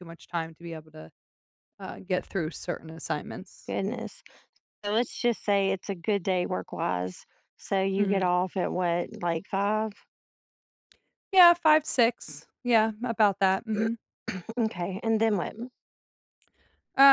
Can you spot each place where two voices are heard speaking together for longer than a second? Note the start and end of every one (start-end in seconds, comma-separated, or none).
none